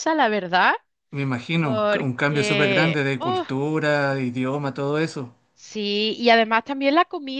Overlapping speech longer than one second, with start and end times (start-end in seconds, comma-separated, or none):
1.6-3.4